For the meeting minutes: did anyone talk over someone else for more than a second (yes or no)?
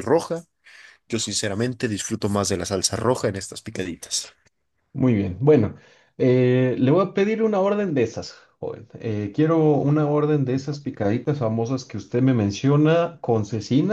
no